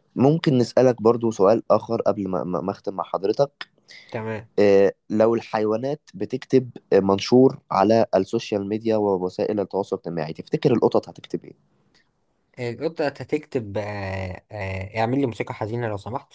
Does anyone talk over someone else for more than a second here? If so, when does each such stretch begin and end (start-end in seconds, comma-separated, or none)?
none